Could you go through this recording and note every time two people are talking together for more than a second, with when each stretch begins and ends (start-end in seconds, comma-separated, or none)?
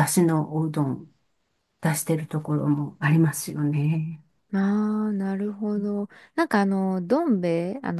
none